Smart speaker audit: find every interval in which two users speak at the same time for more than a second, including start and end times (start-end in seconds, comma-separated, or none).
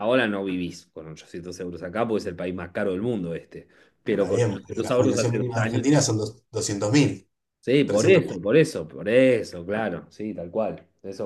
4.2-5.8